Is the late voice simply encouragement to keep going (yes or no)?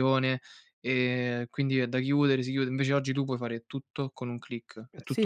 no